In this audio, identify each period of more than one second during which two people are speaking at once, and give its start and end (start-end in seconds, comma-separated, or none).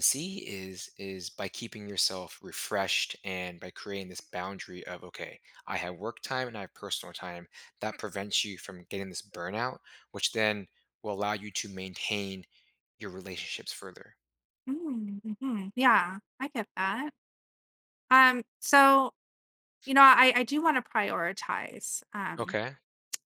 none